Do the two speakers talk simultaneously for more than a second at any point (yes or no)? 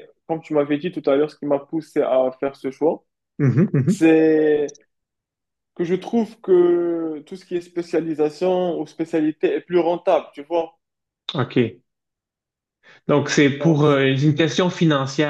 no